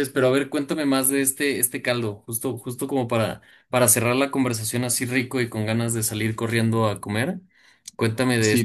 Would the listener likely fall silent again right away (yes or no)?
no